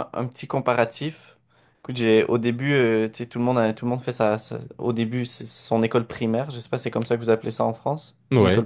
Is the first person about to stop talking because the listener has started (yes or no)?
yes